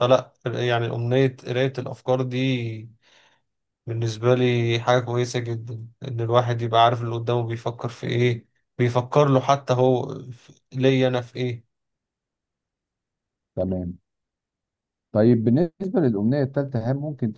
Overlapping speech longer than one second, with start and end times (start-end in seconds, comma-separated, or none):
none